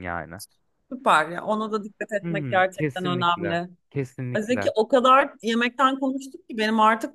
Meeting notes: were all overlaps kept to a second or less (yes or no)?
no